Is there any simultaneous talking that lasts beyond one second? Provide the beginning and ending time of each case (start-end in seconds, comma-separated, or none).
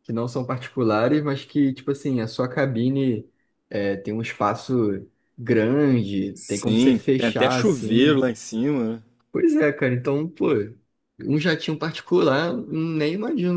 6.3-8.2